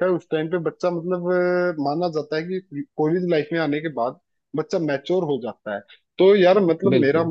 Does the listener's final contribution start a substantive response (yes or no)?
no